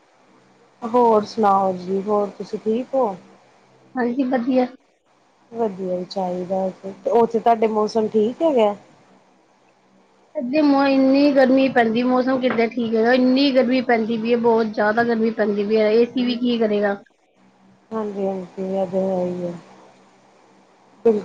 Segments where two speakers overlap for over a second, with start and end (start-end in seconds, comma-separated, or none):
none